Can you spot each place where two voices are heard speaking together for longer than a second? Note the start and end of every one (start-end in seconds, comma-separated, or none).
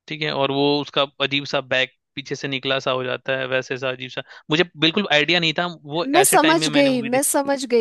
6.0-7.3